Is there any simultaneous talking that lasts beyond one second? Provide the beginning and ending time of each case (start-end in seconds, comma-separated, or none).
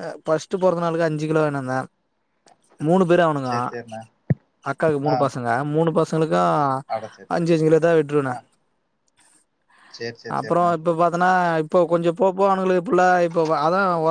none